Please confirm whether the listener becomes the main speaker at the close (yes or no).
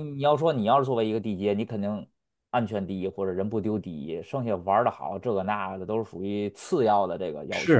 yes